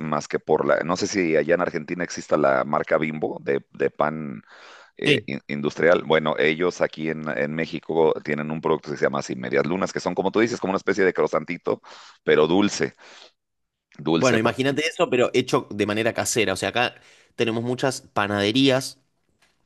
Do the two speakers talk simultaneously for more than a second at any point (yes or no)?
no